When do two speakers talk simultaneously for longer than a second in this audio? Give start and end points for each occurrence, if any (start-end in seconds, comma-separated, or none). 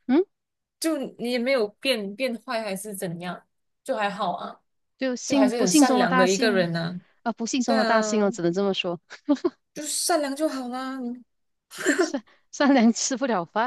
5.3-6.7